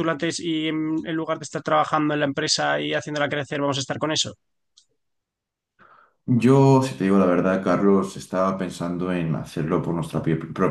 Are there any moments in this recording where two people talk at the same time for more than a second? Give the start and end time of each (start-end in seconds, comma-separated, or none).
none